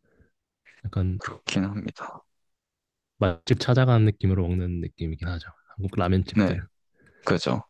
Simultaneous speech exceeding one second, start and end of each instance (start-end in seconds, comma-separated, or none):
none